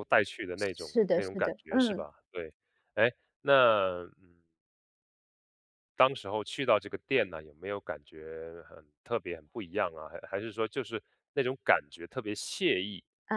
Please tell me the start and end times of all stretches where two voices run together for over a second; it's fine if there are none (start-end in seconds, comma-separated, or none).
0.6-2.1